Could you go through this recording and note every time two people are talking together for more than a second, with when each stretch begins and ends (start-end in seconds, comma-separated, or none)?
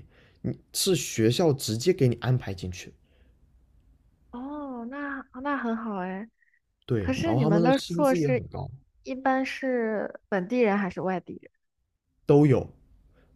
7.0-8.5